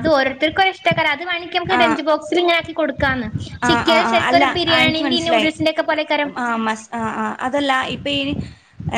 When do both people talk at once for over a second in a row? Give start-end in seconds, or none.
3.7-5.5